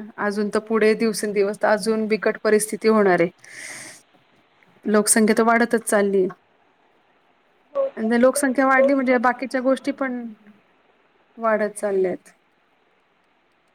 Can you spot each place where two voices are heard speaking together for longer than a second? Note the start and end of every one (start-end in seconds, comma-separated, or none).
8.0-10.2